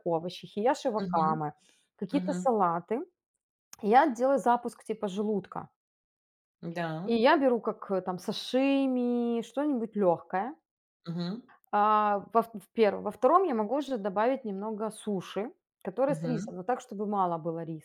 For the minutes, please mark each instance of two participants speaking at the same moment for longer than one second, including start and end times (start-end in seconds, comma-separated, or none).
none